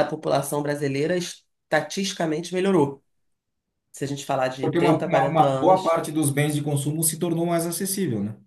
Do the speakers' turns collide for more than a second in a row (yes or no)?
yes